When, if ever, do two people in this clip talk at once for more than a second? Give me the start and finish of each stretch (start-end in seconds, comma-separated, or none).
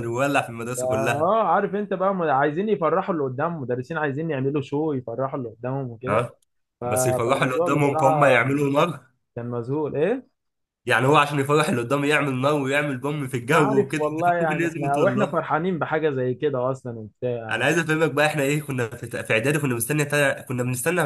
6.9-8.4, 13.5-15.4